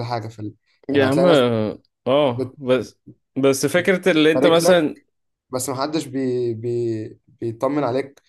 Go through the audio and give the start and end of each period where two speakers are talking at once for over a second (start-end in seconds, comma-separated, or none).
none